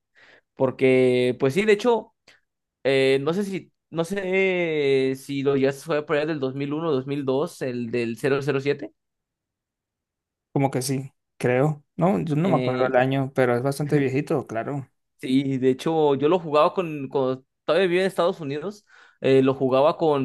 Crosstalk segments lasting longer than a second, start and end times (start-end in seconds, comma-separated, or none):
none